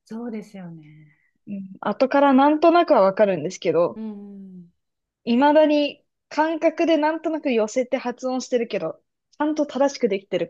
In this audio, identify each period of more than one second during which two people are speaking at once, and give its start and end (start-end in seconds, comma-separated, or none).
none